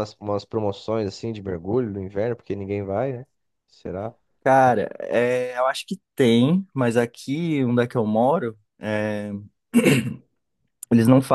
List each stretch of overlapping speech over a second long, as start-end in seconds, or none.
none